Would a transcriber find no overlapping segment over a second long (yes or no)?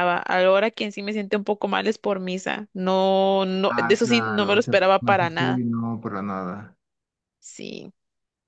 no